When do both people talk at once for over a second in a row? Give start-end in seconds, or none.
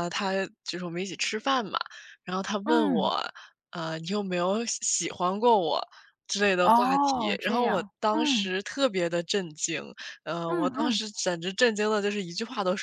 6.6-8.5